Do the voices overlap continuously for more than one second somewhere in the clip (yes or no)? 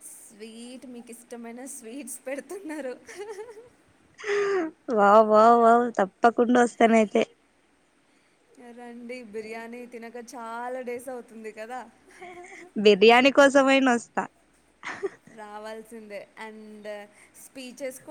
no